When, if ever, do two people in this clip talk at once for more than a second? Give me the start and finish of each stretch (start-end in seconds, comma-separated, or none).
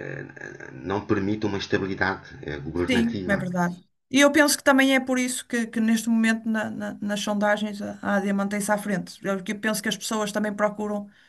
none